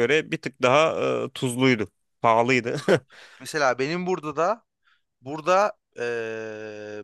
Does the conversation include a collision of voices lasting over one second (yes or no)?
no